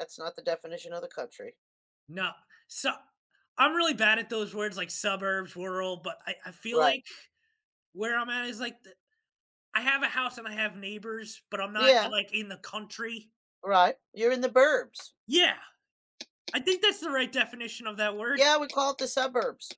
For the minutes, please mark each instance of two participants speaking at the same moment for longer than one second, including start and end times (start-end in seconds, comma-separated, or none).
none